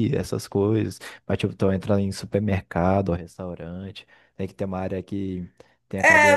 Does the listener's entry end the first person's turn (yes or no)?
yes